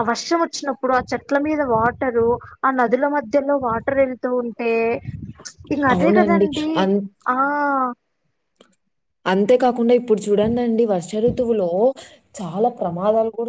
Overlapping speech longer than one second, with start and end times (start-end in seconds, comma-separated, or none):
none